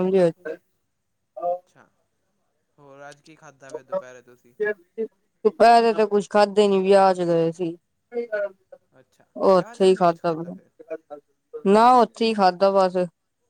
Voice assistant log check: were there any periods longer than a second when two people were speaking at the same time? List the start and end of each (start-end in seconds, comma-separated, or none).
9.5-10.7